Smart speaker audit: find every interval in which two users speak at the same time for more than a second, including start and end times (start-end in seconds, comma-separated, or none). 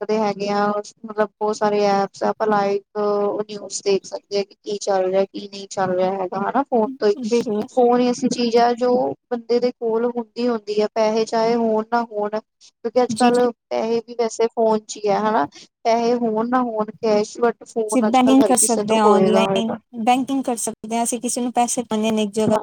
17.7-19.8